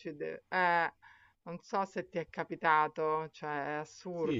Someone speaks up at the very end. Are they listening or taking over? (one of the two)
taking over